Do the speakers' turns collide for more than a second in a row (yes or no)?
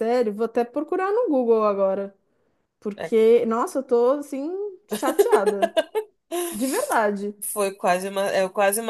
no